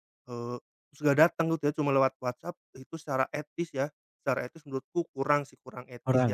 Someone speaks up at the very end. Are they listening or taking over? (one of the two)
taking over